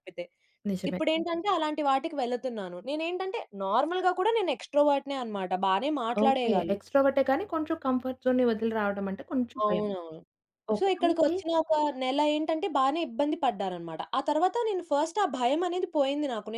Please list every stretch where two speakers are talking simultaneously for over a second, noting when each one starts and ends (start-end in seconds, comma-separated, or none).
none